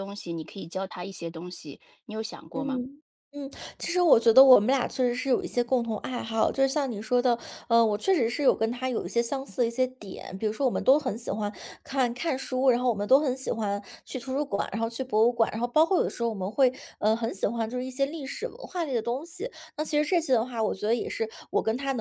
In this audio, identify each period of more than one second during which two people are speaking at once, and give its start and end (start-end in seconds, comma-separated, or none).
none